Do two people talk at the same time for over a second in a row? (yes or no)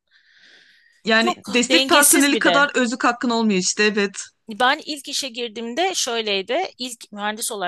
yes